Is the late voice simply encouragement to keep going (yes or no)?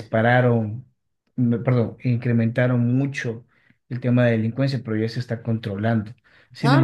yes